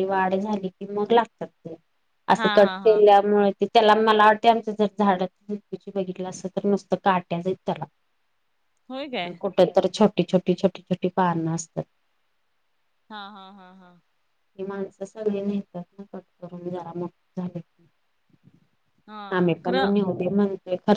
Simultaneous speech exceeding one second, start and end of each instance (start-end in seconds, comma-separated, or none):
none